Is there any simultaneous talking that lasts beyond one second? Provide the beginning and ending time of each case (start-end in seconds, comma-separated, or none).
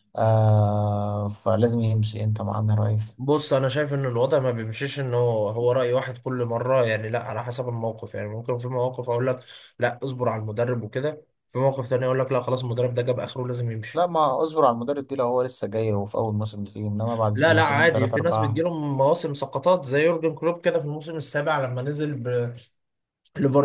17.3-18.6